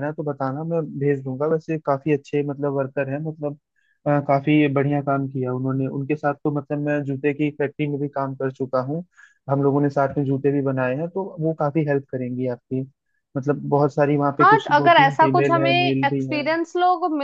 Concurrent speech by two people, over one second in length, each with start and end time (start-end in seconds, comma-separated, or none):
14.4-16.4